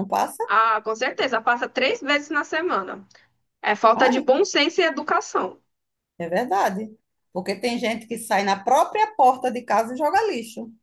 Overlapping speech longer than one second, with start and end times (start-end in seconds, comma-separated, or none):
none